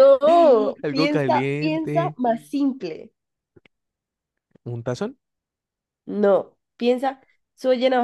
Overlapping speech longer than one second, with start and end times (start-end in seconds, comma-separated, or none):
0.8-2.2